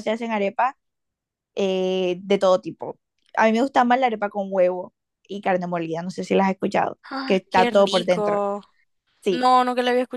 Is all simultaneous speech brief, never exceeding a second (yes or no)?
no